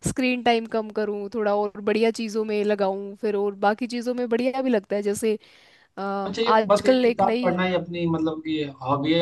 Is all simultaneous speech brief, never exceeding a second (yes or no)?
no